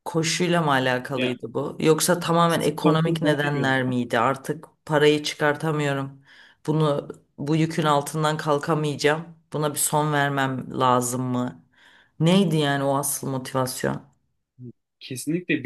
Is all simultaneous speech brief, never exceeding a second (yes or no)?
no